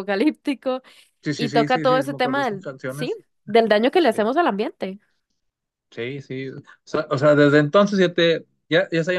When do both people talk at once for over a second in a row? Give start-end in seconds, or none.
1.4-3.2